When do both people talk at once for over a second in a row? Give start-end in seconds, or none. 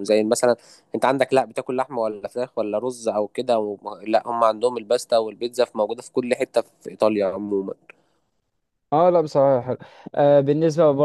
none